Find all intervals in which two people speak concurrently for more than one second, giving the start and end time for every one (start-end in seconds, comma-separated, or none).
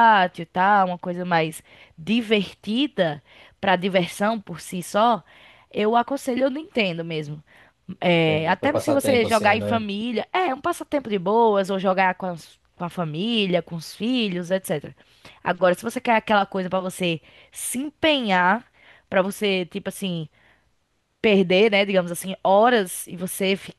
8.2-9.8